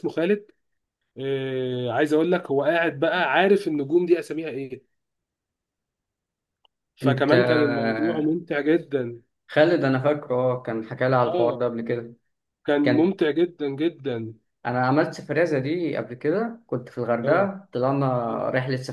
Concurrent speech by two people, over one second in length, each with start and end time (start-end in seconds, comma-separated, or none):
none